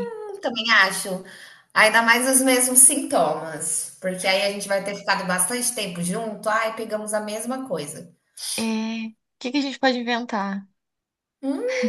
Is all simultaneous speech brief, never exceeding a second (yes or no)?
yes